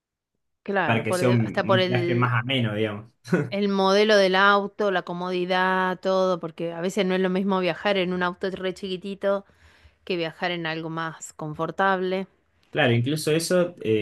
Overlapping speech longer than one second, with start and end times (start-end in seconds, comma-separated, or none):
0.8-2.3